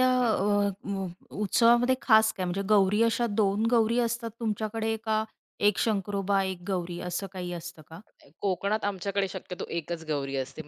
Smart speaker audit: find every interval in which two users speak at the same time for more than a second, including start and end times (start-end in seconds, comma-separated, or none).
none